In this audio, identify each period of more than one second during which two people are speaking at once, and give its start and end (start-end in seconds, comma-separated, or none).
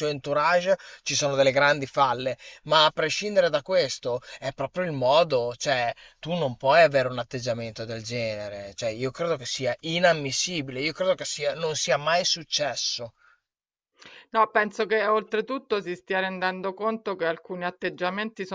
none